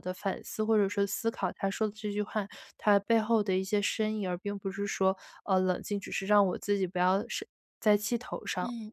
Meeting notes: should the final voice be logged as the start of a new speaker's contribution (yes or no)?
yes